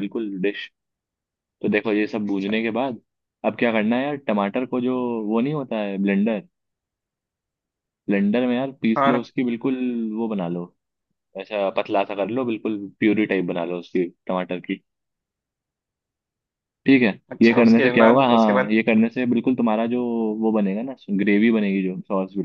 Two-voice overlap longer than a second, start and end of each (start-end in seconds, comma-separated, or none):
17.3-18.8